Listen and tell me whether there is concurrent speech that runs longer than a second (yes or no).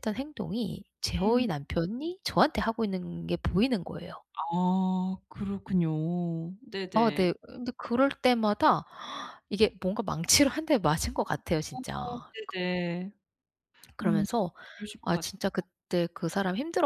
no